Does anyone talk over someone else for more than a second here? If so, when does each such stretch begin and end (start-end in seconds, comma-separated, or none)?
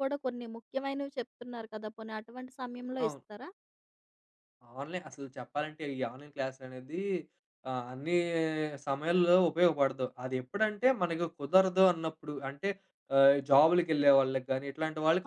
none